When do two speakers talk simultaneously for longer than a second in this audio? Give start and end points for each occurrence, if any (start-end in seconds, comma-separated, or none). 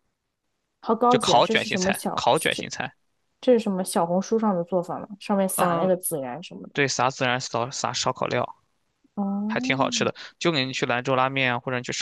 1.1-2.7